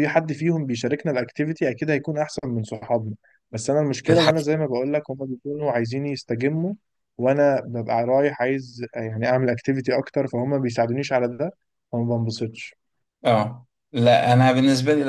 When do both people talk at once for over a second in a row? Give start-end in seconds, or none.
none